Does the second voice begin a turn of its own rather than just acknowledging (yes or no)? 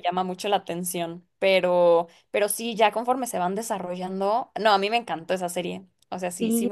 yes